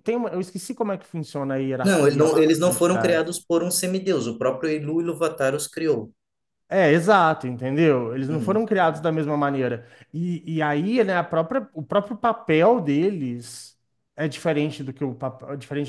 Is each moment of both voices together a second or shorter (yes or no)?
no